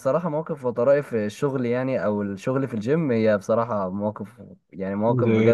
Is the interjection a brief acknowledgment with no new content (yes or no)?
no